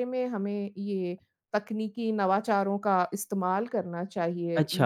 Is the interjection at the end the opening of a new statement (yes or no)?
yes